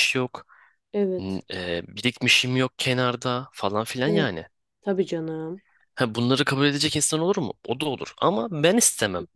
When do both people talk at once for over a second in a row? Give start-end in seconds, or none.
none